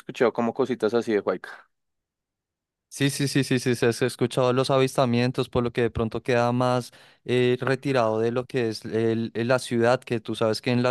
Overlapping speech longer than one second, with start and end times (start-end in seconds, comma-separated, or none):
none